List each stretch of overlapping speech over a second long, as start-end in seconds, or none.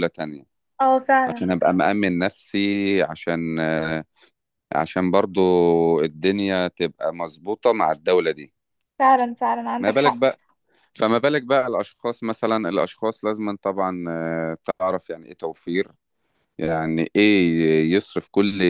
none